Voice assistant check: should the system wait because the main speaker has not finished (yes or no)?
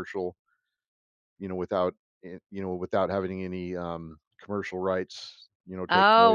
no